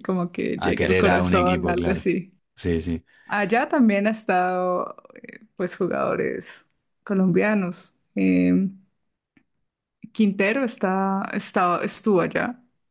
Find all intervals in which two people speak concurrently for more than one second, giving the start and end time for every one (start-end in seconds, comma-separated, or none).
0.6-2.1